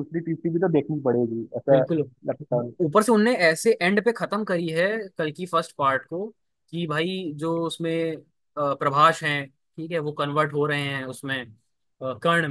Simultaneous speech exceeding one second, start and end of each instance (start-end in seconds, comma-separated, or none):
none